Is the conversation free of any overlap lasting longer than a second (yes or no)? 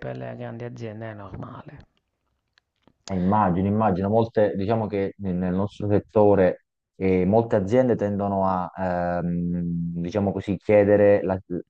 yes